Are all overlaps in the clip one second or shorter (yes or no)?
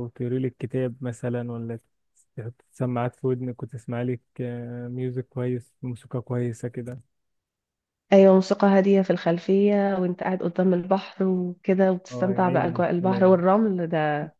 no